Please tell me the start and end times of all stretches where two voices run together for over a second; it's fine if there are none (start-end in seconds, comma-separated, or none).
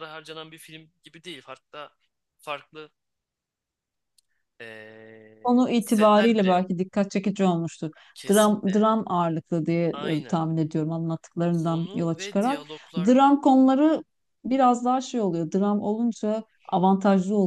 5.4-6.7, 11.5-13.1